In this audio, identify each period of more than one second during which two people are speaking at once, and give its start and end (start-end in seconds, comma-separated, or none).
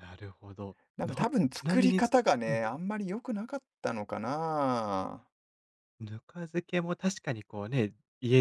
0.9-2.6